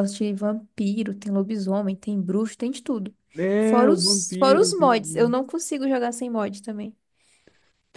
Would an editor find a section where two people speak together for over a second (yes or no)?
yes